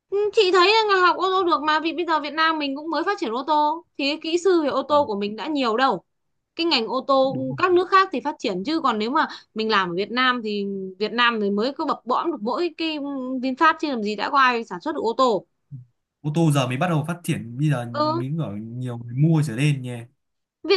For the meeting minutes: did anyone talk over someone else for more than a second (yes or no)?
no